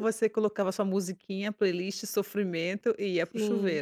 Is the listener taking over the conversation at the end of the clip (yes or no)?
yes